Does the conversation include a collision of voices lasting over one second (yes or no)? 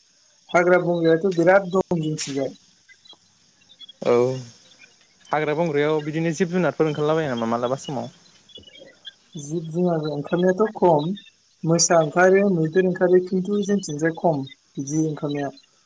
no